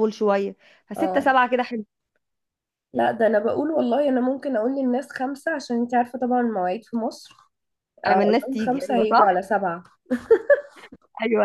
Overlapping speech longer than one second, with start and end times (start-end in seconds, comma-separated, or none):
8.1-9.4